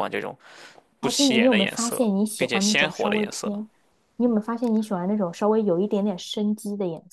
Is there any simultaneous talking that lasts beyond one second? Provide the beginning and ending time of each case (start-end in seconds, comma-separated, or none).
1.0-3.5